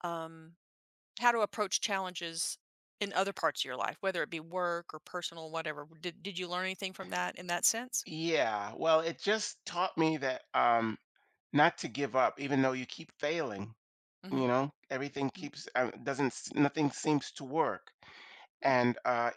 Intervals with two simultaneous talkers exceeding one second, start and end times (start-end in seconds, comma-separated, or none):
none